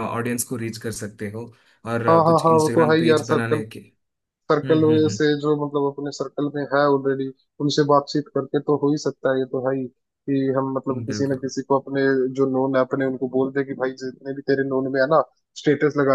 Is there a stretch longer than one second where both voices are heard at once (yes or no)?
yes